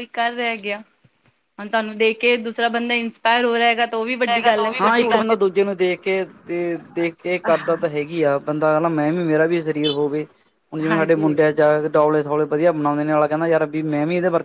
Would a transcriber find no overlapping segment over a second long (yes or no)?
no